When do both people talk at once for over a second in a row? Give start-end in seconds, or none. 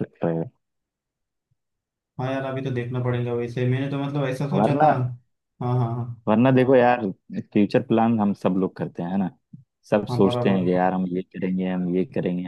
none